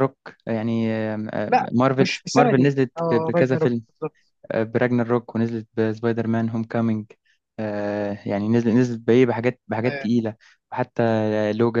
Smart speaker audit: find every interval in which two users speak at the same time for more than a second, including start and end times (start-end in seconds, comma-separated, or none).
1.5-3.8